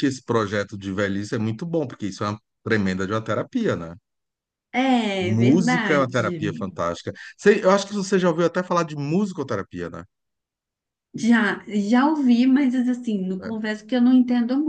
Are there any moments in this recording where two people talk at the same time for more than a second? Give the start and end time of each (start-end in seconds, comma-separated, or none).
5.2-6.4